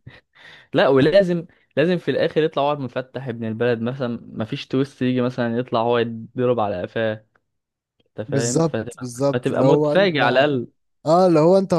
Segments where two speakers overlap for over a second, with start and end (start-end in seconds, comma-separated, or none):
8.3-10.2